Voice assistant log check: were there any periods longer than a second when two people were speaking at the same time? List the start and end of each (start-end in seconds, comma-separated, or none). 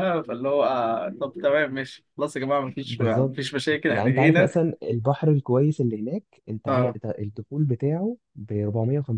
2.8-4.5